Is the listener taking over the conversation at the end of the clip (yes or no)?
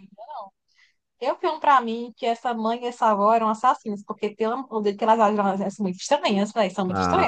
yes